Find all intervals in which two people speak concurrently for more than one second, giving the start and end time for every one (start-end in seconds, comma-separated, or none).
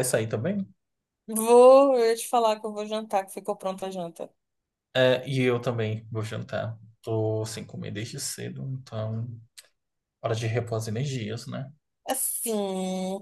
none